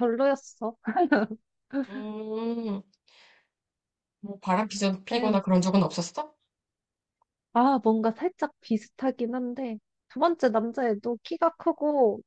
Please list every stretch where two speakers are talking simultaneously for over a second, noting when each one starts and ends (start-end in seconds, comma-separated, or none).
none